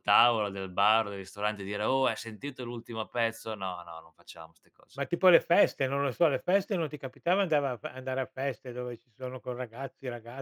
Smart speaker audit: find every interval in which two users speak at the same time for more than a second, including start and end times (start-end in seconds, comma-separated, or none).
none